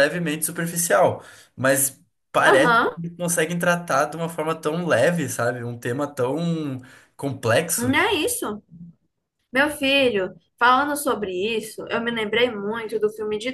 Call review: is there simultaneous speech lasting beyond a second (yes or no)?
no